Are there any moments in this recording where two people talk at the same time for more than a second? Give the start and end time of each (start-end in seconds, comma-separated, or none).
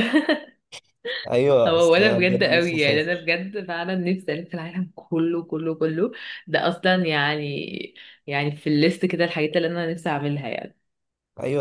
1.6-3.3